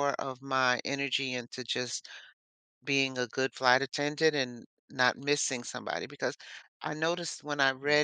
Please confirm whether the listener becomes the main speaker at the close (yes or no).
no